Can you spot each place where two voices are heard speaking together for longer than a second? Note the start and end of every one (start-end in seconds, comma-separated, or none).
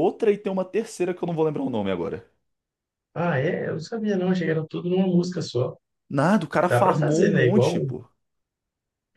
6.7-7.9